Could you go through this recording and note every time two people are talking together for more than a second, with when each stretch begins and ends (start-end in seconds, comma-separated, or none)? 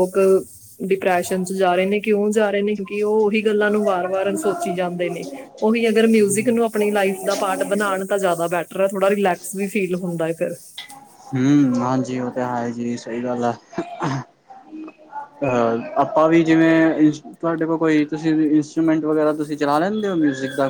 none